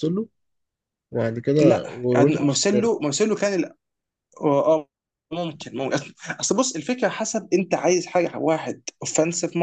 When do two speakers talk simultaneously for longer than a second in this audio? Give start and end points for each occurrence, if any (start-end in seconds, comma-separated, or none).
1.6-3.1